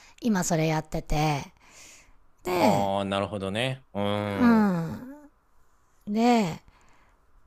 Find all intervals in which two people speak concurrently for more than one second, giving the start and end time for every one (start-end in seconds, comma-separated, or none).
none